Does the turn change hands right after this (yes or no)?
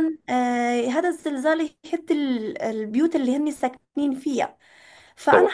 no